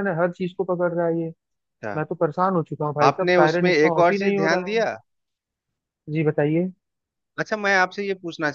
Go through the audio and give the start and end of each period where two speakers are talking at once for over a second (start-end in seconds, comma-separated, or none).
3.0-4.8